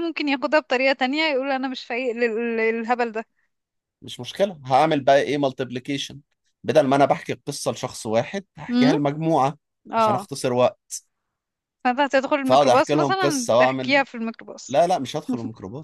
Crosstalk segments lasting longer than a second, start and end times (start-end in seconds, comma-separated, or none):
12.4-14.0